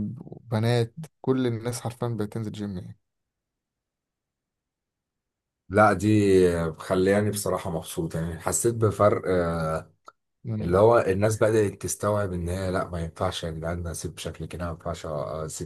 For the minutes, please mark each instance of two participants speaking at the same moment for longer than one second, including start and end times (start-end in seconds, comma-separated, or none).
none